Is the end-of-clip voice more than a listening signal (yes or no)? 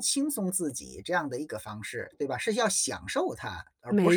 yes